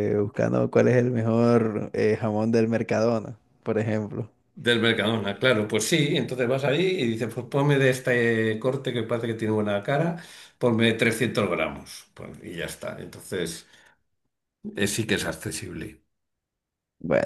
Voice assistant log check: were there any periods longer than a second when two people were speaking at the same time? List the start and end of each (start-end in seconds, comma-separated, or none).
none